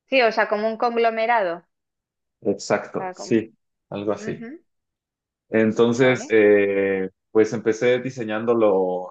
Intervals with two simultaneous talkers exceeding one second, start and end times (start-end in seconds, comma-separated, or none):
none